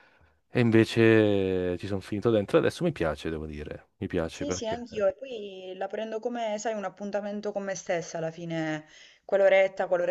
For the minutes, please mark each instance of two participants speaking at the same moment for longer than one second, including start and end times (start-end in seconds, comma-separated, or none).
none